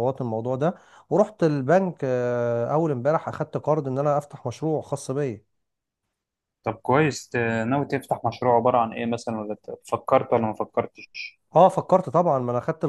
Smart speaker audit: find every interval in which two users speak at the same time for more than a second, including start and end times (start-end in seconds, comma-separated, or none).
none